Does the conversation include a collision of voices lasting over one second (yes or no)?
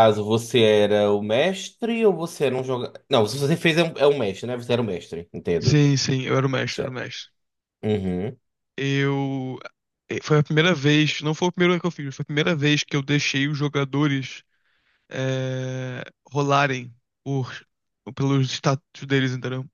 no